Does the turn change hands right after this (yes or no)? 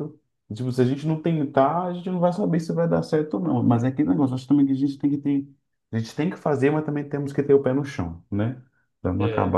no